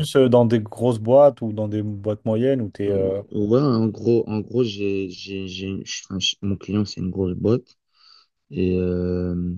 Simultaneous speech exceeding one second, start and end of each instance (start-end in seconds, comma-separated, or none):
none